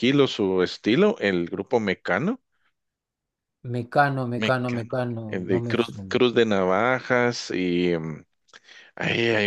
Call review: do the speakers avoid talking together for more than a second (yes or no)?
no